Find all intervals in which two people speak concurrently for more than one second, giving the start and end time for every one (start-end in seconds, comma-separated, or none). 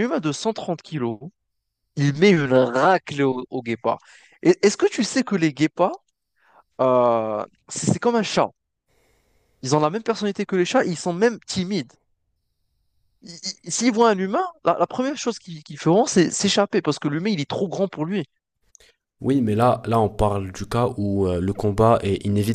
none